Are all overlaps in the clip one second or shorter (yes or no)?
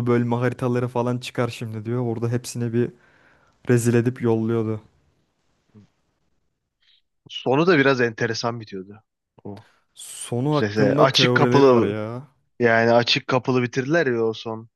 no